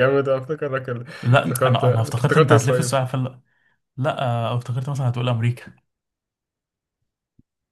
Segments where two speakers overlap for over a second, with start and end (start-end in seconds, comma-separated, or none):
1.2-2.9